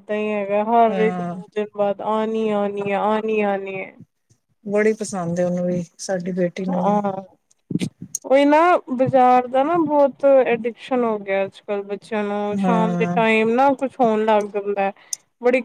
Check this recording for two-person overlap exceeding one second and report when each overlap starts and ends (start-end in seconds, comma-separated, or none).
none